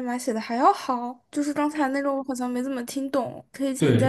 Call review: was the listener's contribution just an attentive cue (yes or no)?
no